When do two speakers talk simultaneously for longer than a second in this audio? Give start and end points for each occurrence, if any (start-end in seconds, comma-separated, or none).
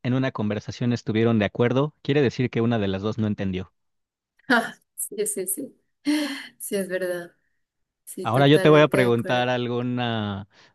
8.2-9.5